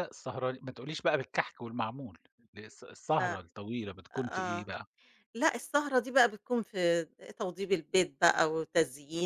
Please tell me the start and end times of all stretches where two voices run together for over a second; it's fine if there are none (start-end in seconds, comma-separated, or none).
none